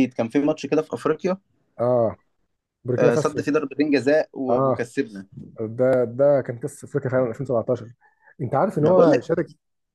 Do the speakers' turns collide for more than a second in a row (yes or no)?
no